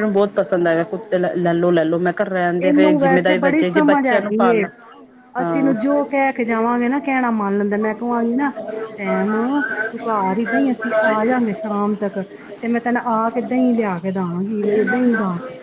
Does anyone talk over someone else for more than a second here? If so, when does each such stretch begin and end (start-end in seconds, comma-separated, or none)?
2.6-4.6